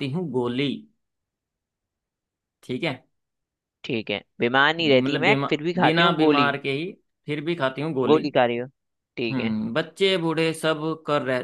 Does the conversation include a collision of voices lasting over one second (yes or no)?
yes